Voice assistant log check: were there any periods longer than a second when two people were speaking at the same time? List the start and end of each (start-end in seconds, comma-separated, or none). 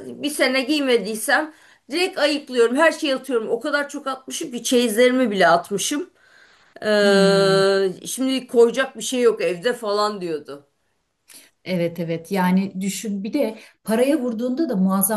none